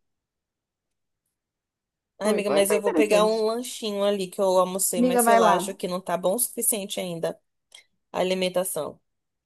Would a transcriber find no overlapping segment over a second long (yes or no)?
no